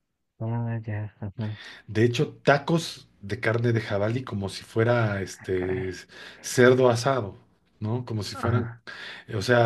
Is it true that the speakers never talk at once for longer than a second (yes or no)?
yes